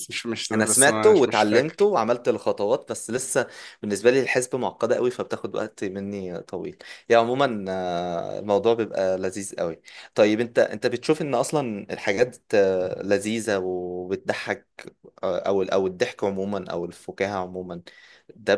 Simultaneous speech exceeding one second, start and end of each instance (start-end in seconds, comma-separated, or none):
0.5-1.9